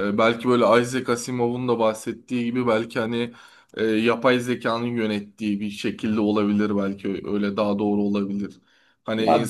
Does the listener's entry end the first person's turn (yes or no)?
no